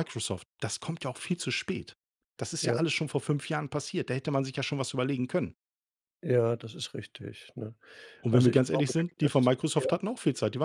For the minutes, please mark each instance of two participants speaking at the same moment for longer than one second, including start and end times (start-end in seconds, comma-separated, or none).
8.3-9.9